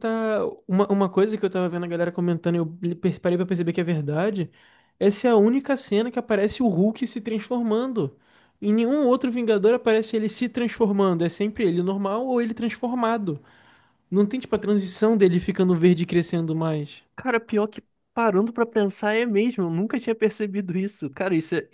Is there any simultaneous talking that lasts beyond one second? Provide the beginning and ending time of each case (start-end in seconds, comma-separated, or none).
none